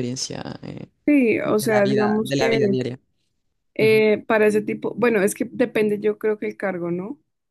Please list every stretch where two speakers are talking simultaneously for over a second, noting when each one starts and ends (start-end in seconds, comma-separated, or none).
1.4-2.8